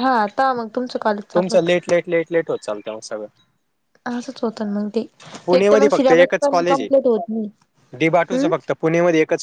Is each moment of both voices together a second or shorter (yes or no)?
no